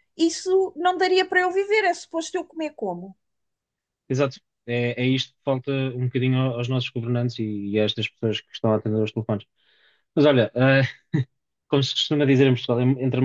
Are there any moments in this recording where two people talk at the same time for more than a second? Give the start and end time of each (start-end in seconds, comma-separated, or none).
none